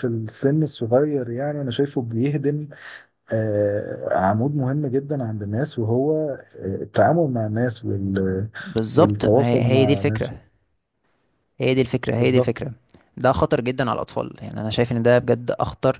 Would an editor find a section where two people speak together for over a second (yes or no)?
yes